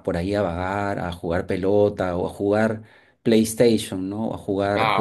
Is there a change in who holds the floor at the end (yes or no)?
yes